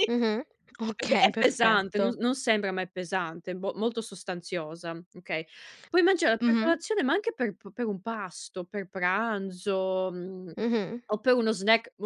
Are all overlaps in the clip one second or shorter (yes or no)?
no